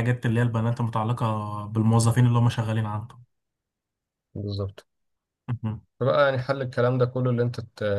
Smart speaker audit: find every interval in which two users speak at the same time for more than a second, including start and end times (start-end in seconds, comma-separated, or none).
none